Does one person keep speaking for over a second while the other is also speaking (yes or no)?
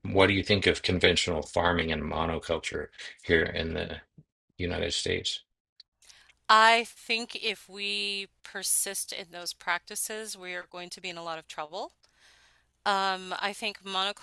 no